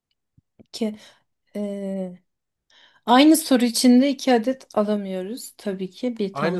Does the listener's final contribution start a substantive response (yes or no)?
yes